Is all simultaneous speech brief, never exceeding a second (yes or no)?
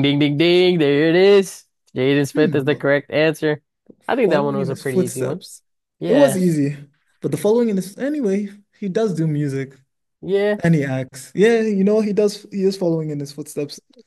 no